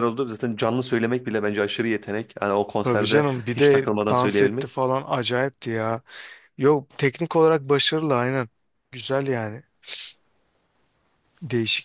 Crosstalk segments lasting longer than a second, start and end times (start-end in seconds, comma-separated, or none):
2.8-4.7